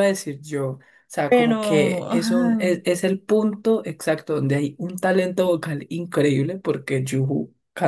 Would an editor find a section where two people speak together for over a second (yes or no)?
yes